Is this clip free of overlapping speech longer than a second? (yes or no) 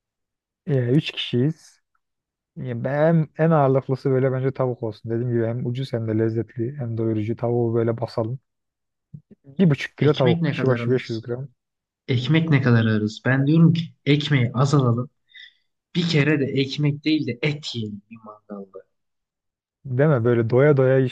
no